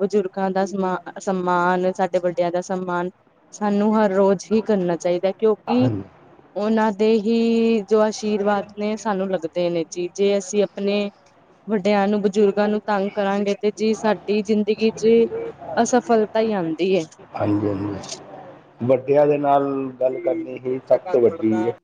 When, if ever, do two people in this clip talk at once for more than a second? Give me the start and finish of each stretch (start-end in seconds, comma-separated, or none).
none